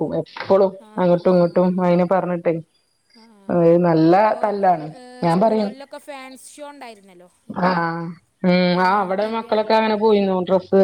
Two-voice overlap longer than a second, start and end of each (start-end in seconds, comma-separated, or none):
none